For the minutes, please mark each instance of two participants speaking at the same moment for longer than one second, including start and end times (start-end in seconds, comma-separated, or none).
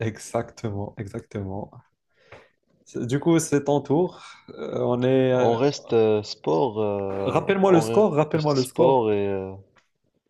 7.3-9.0